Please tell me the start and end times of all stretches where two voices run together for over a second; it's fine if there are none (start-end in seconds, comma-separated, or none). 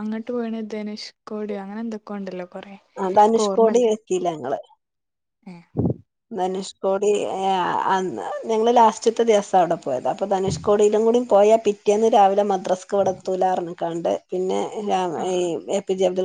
none